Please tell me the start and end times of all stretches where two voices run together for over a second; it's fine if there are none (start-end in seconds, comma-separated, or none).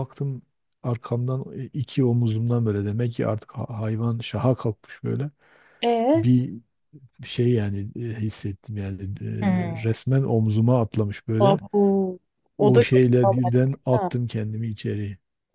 12.6-14.1